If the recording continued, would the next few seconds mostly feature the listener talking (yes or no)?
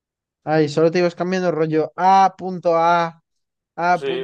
yes